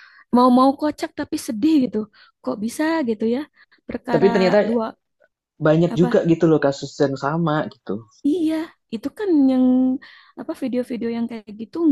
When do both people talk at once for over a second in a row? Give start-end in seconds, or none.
none